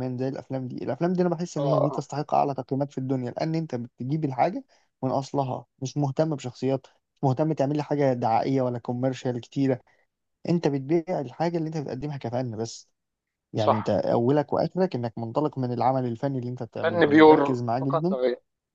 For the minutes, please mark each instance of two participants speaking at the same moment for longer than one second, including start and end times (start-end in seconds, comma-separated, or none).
16.8-18.2